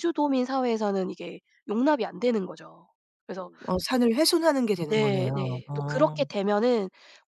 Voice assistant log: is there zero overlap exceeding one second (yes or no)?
no